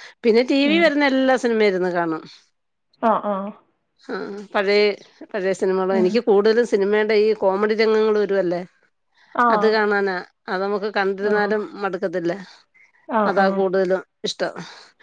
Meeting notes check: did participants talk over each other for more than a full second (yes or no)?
no